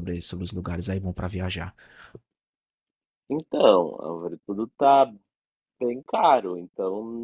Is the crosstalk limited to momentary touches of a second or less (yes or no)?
yes